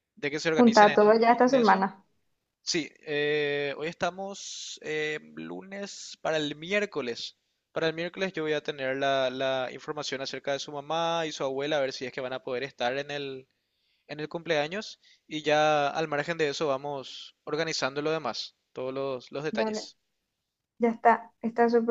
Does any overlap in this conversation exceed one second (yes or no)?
yes